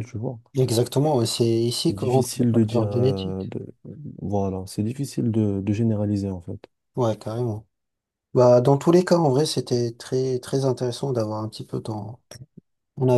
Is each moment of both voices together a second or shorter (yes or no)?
no